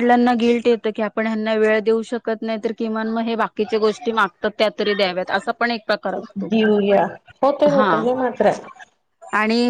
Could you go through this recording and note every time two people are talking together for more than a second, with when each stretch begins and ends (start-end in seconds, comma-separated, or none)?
none